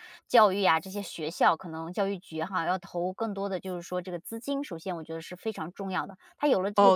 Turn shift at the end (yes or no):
yes